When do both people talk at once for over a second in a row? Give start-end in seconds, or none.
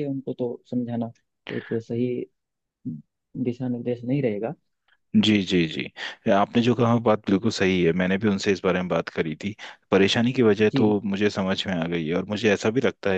none